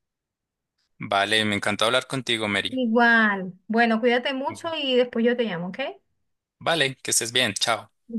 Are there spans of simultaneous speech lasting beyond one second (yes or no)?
no